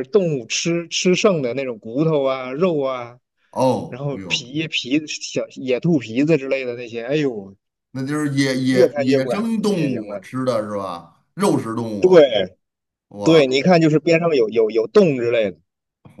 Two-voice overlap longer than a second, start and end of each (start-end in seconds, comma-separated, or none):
8.7-10.3